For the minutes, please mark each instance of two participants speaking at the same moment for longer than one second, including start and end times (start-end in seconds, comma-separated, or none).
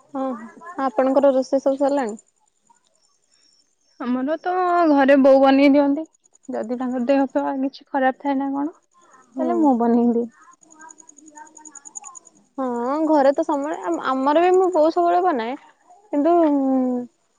none